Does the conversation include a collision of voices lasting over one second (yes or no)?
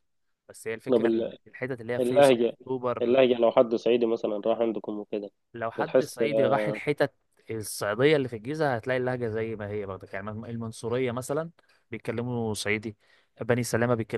no